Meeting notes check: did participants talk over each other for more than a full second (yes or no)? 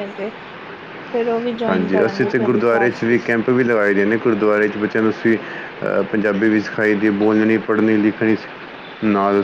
yes